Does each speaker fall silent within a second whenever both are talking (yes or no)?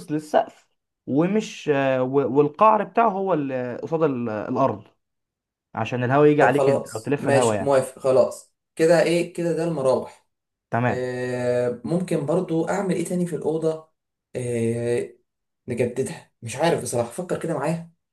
no